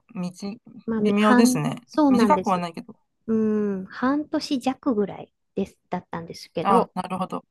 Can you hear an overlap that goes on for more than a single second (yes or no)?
yes